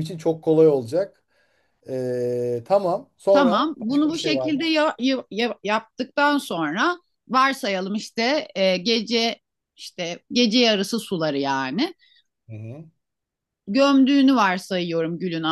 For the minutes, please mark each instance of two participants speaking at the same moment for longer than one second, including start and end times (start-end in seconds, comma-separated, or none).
3.3-4.7